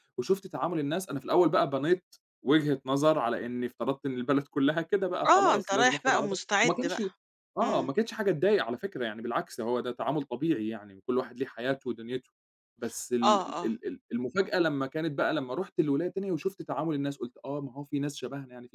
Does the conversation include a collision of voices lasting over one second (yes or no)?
yes